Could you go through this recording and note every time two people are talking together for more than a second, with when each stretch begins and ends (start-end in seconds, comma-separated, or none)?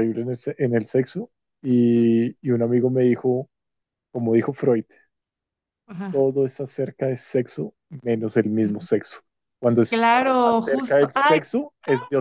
9.9-11.4